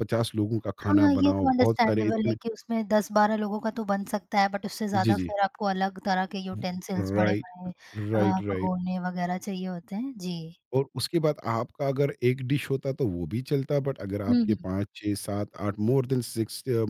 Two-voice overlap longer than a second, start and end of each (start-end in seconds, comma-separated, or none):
0.9-2.4